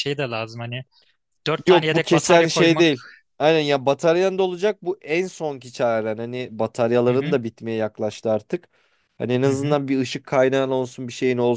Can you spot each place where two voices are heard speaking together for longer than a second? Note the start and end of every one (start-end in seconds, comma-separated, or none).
1.7-2.9